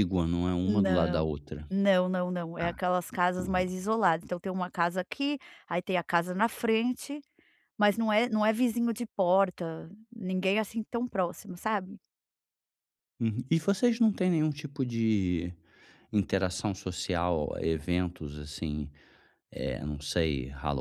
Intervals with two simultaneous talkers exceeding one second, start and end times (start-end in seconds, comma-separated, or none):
none